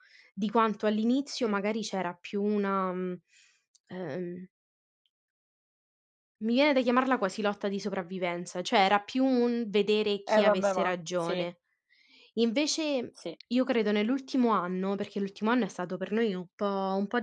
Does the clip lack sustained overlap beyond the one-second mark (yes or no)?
no